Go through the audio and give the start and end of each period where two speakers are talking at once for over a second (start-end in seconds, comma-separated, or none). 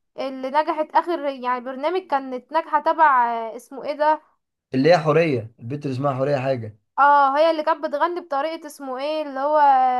none